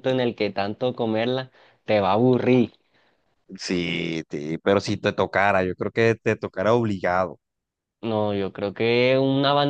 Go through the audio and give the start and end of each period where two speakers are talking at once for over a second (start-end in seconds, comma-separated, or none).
none